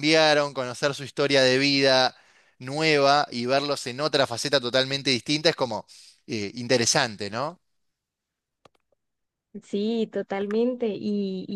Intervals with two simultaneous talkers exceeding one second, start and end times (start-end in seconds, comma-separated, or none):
none